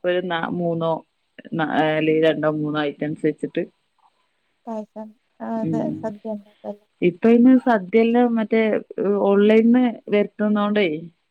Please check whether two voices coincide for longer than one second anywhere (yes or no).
no